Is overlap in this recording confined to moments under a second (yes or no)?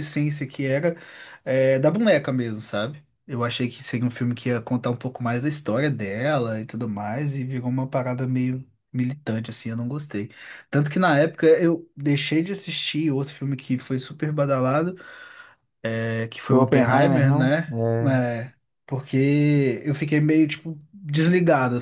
no